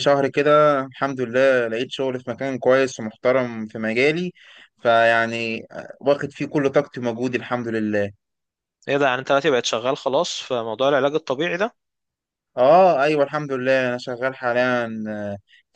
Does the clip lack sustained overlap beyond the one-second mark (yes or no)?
yes